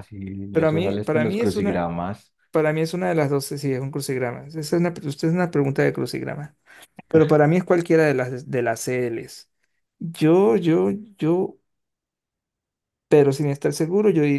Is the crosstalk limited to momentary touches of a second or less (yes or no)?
no